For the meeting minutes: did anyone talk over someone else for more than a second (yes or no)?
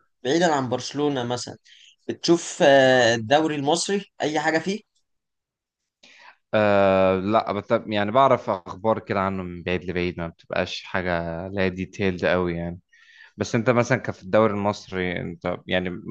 no